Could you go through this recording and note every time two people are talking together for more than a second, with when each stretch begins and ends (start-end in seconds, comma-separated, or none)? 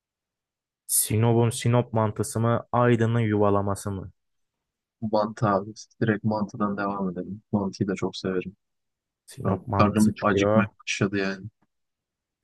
9.4-10.7